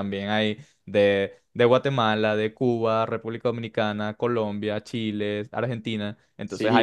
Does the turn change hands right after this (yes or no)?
no